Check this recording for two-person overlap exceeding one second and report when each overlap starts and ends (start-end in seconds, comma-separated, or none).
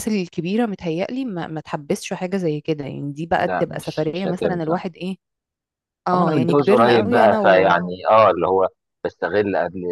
3.4-4.8, 6.1-7.8